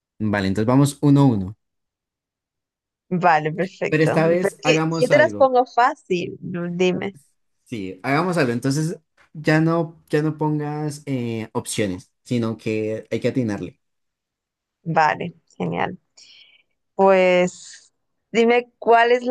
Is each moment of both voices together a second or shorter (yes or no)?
no